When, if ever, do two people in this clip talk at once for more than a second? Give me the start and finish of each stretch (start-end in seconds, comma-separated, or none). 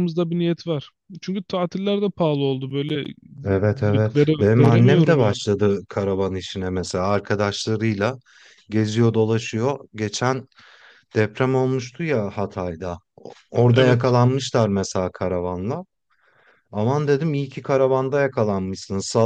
3.8-5.4